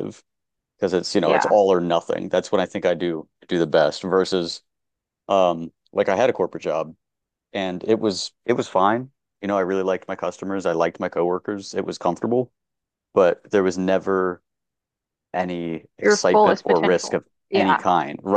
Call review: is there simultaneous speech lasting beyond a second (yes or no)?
yes